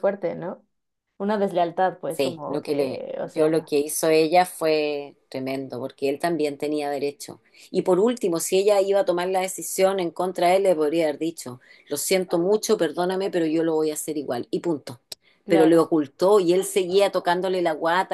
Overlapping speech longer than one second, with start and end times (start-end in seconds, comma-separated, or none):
2.1-3.7